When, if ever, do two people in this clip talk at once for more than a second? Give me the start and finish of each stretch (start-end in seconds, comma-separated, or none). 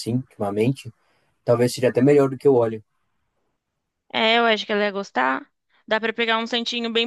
none